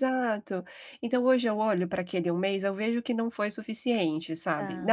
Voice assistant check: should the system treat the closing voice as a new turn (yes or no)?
no